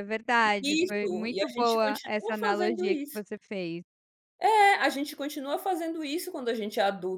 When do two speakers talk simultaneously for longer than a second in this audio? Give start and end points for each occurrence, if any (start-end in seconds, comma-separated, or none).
0.6-3.2